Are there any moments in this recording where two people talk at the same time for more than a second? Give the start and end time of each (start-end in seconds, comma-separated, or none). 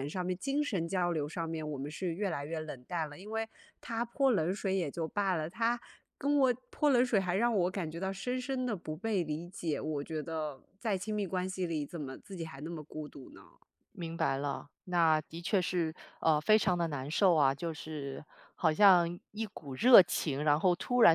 none